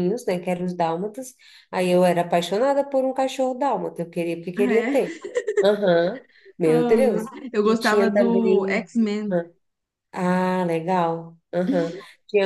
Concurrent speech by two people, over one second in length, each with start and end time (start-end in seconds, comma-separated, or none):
6.6-8.9